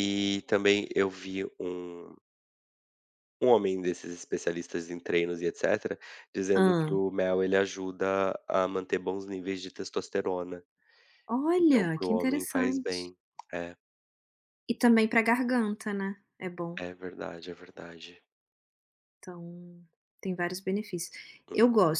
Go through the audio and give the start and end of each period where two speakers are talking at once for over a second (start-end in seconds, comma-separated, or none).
11.6-13.1